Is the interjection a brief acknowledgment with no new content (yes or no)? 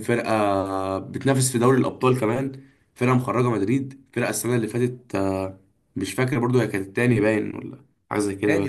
no